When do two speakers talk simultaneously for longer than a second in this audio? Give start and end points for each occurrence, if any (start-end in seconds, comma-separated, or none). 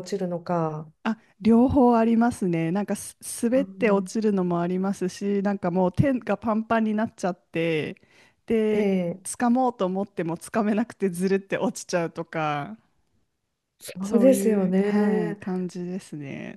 14.0-15.4